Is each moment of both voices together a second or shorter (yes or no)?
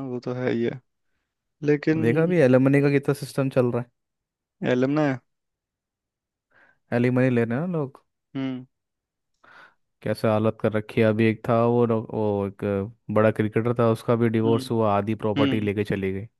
yes